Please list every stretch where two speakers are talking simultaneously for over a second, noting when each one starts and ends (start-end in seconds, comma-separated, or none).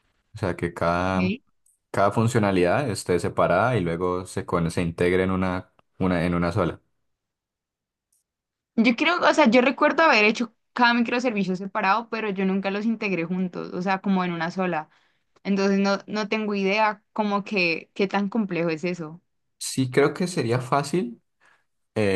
none